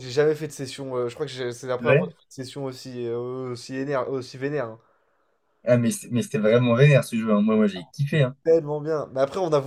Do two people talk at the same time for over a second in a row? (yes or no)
no